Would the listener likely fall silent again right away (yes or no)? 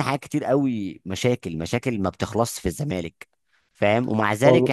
yes